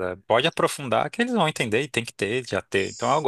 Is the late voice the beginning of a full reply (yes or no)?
no